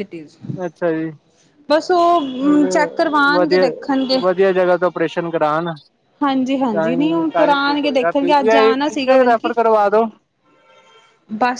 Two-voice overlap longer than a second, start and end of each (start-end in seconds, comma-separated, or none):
6.7-9.5